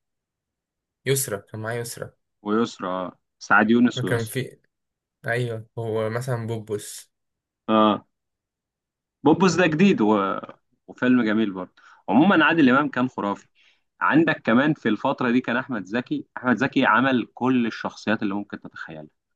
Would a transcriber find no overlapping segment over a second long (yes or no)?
yes